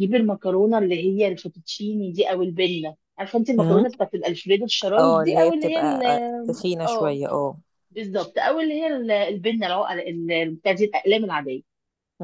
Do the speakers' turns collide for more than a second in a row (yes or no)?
yes